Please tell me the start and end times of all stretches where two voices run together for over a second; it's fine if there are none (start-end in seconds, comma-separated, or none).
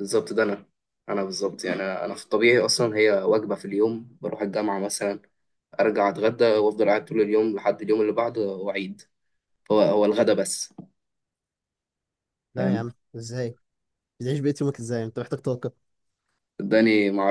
none